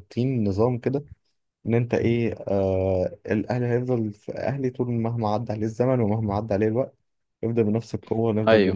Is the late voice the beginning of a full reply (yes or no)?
no